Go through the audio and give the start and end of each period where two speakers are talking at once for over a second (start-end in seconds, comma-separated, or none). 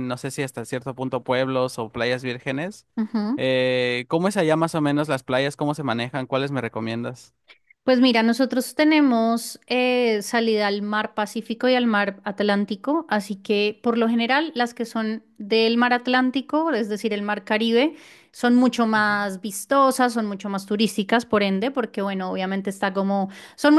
none